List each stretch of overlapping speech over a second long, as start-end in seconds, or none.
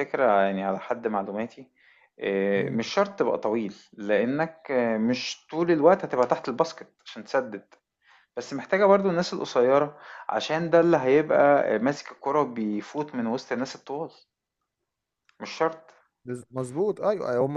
none